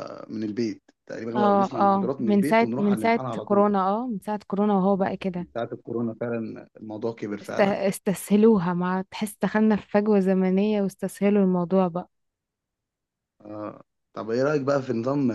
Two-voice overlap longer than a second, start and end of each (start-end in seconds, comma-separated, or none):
1.4-3.7